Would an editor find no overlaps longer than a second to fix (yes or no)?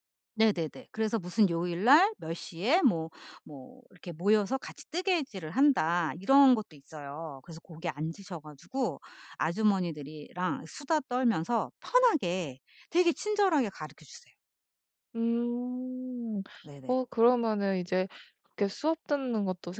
yes